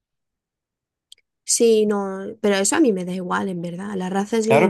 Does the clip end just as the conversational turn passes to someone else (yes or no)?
yes